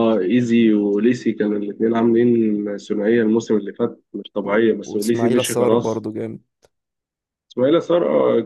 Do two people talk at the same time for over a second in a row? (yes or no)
yes